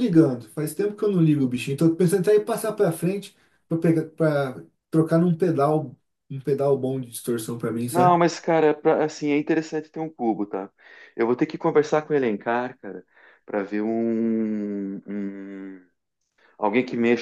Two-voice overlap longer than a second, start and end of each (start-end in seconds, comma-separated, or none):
none